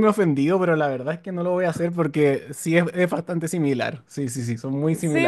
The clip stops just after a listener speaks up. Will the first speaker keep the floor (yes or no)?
no